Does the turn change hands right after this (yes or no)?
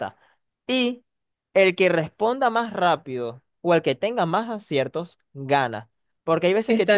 no